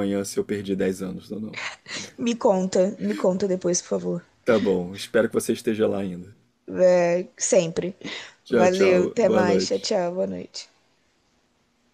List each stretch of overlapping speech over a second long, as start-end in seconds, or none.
8.5-9.9